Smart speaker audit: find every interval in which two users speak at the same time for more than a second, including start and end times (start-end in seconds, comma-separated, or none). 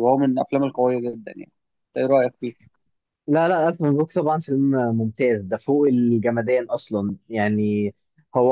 none